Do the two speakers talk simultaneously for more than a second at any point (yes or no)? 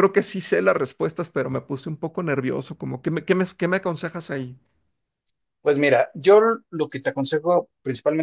no